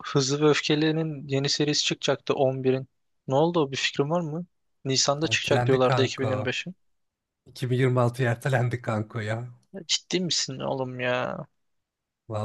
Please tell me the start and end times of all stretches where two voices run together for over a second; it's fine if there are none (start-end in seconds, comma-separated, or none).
5.3-6.5